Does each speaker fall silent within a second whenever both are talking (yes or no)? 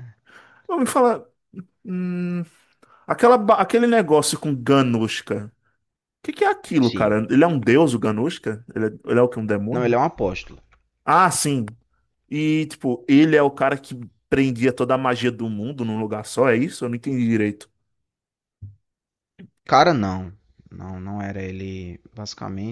yes